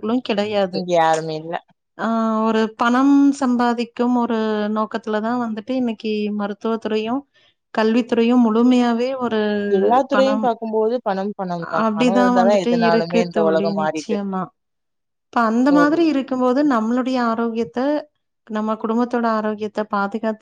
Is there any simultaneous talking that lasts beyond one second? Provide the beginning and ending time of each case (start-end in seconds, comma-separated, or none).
11.9-14.2